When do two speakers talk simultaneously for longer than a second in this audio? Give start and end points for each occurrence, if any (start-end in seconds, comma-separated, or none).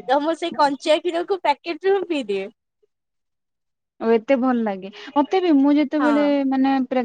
none